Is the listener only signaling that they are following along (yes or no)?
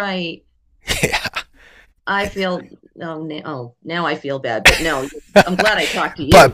no